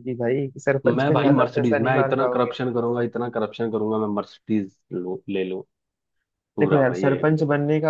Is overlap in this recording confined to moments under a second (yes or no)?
no